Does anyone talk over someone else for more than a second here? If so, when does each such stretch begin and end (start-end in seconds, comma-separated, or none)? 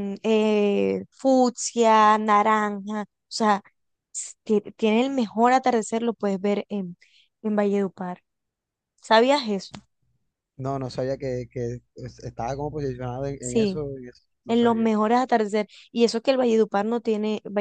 none